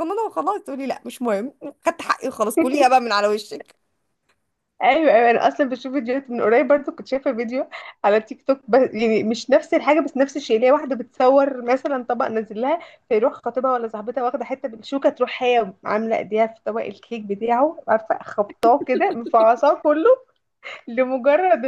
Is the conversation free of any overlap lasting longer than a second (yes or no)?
yes